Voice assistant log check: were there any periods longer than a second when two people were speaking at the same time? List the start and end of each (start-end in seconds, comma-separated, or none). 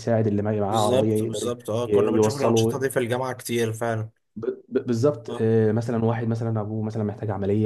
0.7-2.9